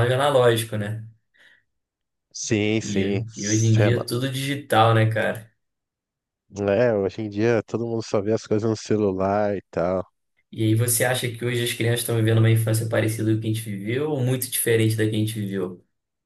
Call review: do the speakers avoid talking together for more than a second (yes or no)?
no